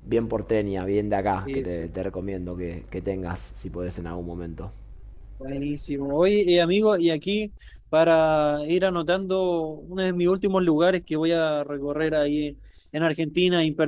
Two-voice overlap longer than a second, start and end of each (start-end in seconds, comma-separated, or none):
none